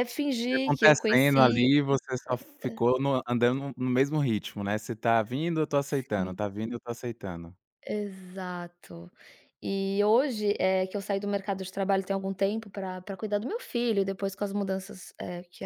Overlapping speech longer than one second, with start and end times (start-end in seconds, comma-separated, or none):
0.5-1.7